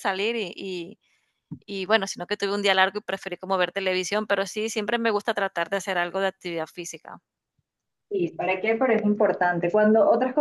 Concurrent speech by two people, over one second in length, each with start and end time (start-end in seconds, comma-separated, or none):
none